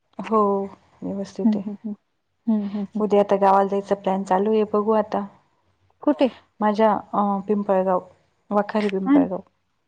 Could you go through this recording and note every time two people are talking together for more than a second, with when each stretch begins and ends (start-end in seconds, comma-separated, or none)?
none